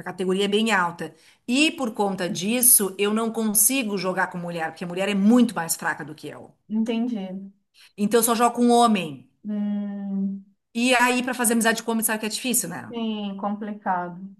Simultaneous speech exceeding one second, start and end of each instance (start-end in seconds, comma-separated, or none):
none